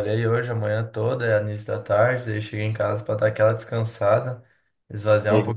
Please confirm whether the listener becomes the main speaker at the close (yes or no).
no